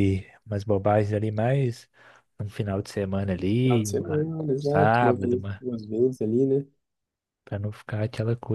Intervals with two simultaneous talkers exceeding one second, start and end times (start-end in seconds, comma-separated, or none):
3.6-5.6